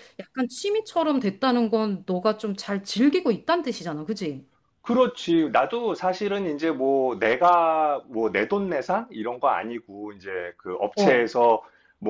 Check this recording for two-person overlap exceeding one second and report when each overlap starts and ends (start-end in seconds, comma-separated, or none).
none